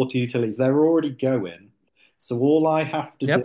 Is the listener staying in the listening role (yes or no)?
no